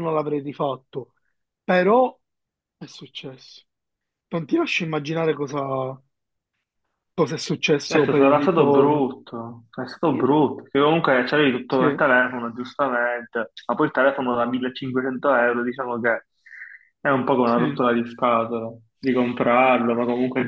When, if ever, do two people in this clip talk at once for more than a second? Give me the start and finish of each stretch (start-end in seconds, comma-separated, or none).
7.8-9.1